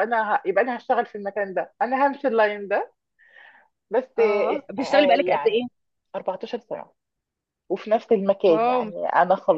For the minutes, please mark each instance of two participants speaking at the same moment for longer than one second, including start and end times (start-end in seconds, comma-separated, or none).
4.2-5.7